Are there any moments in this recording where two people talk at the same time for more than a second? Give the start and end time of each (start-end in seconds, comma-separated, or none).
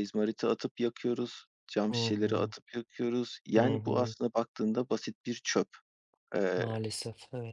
none